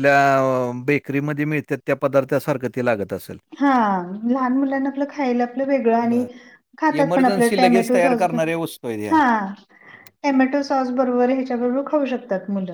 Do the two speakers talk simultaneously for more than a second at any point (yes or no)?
yes